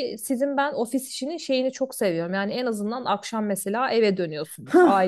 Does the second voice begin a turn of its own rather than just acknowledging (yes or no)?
yes